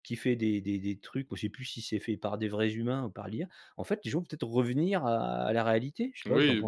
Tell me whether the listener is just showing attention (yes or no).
no